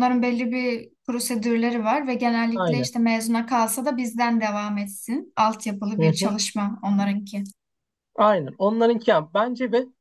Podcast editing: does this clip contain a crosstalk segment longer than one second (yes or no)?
no